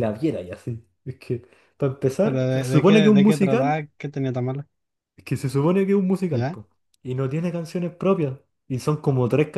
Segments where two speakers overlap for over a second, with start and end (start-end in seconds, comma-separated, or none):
2.2-3.9